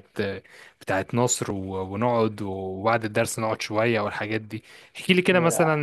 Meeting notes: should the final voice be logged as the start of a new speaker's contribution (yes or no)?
no